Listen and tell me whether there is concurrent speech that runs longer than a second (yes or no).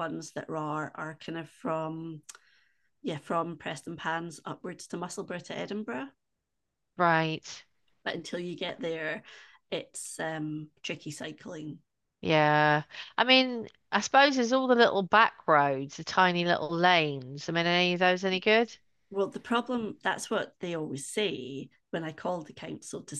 no